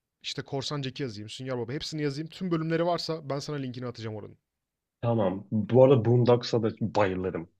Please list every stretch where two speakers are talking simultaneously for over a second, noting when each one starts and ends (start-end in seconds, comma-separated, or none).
none